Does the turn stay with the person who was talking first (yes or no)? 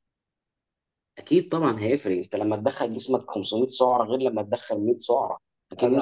no